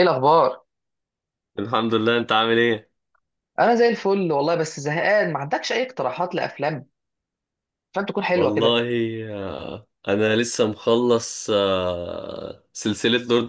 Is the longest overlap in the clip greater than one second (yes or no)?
no